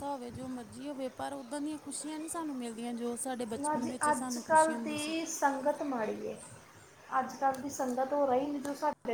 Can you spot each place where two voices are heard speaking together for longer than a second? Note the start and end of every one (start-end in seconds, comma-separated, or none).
3.6-5.1